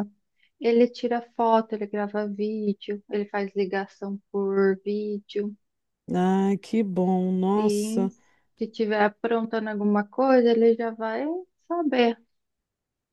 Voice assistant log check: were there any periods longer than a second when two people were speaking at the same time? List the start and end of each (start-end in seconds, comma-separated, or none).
none